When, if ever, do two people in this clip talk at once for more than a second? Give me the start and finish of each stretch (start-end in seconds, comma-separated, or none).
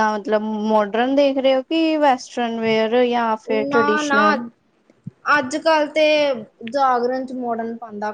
none